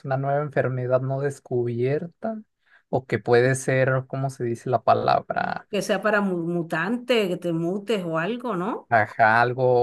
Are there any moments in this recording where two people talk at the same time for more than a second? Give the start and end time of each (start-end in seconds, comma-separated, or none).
none